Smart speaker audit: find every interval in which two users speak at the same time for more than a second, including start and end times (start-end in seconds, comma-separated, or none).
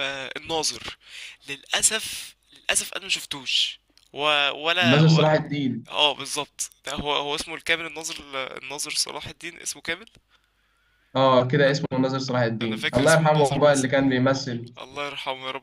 12.6-13.9